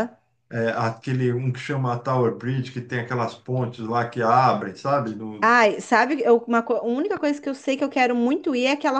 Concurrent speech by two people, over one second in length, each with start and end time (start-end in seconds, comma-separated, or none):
none